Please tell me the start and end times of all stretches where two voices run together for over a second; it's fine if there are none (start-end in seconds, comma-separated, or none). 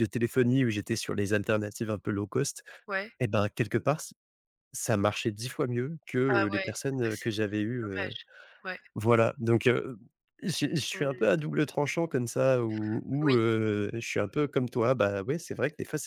6.3-8.1